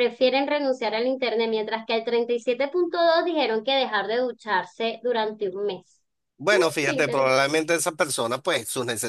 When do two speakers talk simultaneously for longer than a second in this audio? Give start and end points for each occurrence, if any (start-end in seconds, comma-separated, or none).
none